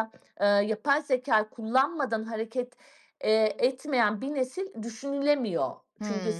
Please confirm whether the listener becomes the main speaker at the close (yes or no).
yes